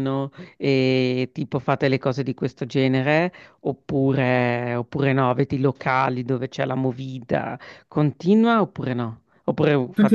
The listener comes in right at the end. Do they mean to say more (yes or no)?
yes